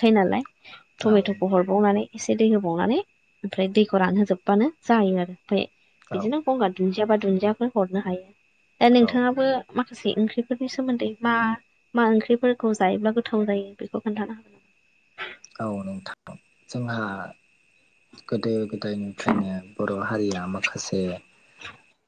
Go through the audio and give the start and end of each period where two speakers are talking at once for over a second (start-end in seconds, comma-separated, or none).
none